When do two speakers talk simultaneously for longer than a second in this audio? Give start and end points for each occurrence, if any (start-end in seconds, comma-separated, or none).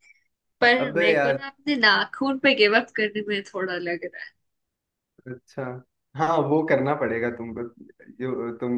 none